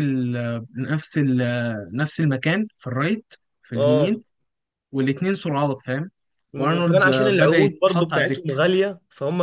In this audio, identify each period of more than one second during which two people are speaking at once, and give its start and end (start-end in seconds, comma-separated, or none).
6.6-8.5